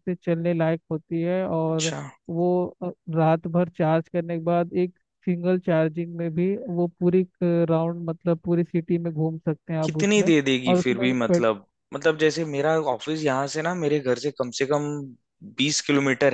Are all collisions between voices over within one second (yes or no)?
no